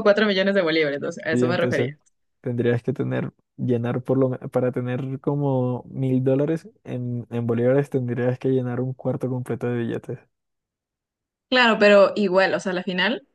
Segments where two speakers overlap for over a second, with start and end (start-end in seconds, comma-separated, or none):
none